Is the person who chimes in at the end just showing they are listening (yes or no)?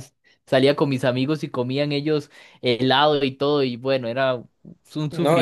no